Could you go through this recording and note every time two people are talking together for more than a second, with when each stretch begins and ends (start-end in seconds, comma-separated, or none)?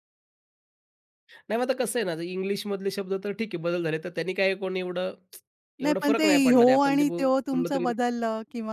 5.8-7.9